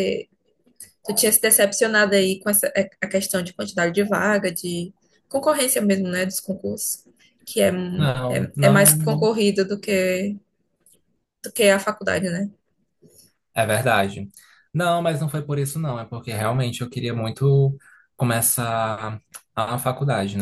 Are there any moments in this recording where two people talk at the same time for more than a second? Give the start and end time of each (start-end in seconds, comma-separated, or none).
7.9-9.3